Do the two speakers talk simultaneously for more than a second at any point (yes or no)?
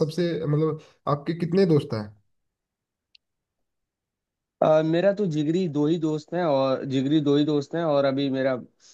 no